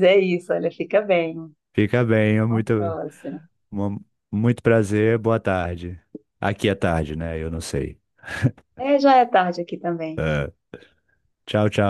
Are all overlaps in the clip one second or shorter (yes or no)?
yes